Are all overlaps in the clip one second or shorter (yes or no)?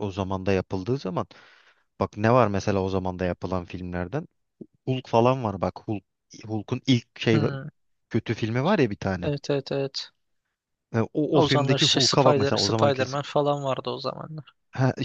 no